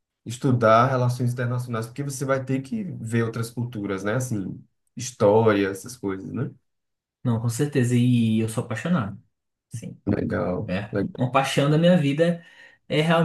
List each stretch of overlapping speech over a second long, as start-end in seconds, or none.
none